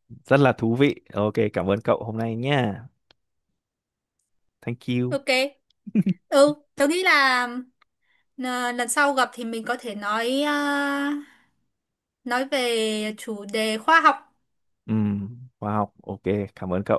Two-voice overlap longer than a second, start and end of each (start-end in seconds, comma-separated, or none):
none